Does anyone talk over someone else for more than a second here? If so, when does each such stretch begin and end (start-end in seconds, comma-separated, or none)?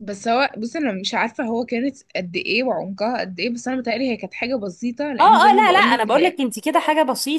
5.2-6.4